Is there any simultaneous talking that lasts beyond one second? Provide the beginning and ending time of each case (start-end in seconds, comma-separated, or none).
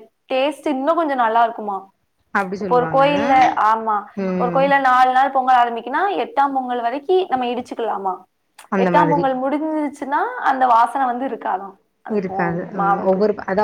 none